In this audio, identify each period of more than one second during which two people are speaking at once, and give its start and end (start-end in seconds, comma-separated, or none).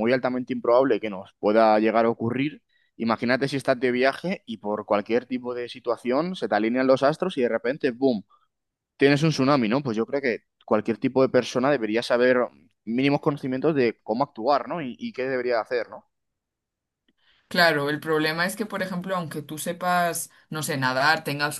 none